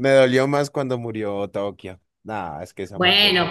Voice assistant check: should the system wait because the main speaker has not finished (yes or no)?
no